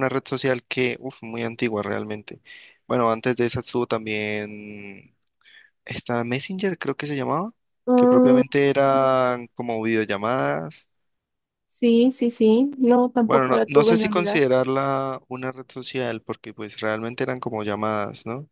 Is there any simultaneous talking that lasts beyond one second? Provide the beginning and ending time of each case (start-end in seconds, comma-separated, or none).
13.2-14.4